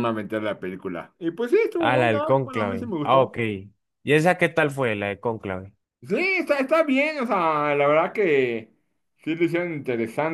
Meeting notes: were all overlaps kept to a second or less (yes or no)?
no